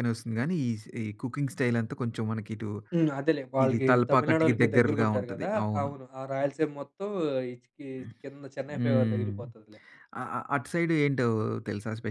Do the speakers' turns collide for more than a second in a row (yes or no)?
yes